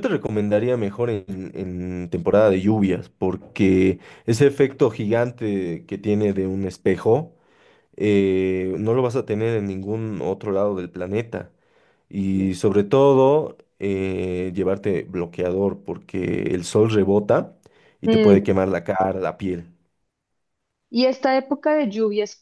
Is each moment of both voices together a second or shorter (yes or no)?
yes